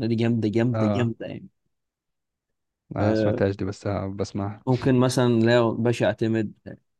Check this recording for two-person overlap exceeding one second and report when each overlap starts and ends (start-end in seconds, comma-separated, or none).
none